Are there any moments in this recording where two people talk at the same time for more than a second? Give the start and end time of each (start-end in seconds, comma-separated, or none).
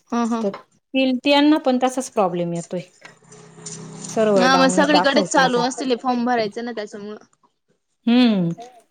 4.4-6.4